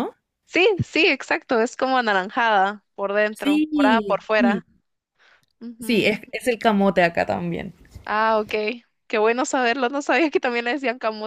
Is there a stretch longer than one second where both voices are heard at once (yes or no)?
yes